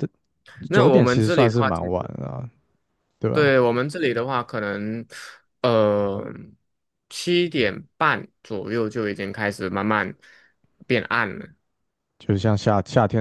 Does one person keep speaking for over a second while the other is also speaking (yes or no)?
yes